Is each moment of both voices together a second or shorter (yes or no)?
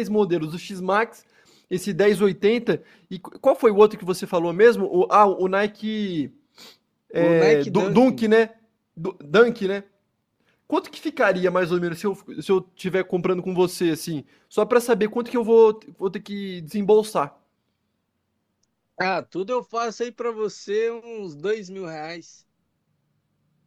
no